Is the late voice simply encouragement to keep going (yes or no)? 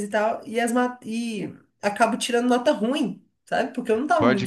no